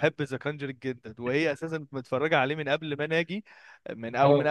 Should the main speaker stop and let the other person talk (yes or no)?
no